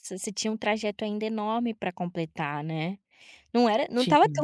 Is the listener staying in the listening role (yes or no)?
yes